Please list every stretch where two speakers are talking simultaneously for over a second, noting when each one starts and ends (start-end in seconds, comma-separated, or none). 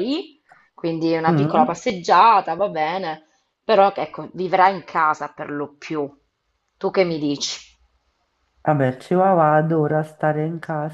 none